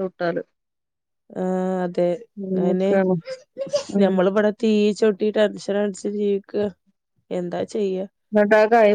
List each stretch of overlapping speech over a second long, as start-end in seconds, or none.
none